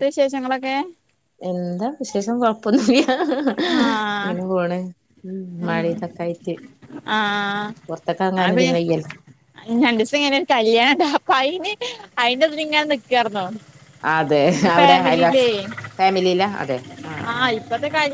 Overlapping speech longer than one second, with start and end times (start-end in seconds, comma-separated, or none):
none